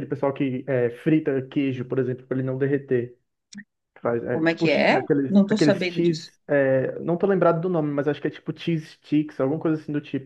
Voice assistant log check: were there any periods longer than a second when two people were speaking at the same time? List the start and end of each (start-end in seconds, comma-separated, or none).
4.3-6.3